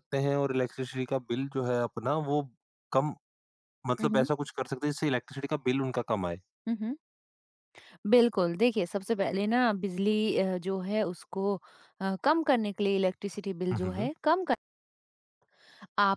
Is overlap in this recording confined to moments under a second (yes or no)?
yes